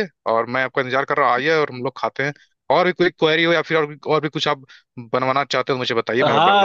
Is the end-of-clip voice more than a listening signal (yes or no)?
yes